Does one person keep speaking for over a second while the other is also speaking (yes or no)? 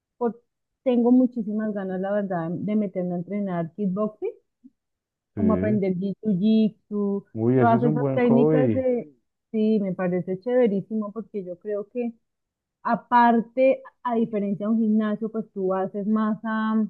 yes